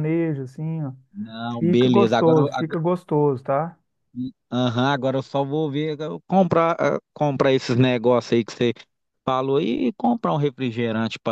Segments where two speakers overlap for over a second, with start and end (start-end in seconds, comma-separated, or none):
1.6-2.8